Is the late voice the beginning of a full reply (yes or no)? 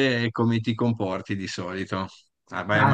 no